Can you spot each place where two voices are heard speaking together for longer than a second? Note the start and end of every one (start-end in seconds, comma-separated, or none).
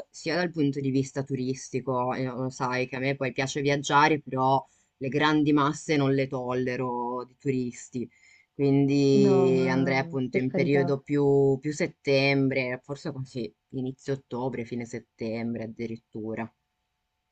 9.1-11.0